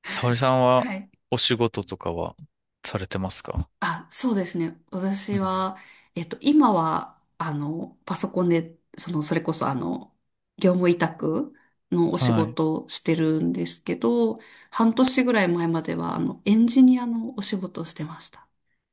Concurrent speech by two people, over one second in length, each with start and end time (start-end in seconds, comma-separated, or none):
none